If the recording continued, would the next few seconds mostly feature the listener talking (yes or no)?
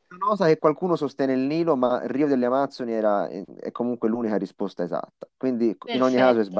no